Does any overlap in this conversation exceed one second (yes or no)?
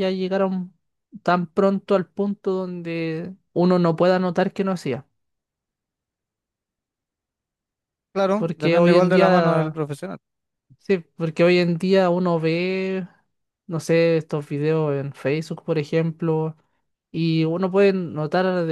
yes